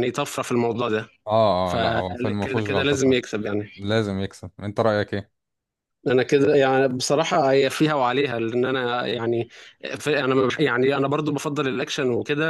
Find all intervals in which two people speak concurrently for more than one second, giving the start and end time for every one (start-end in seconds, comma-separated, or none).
1.6-3.2